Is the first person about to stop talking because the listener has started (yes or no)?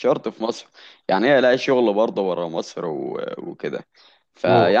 no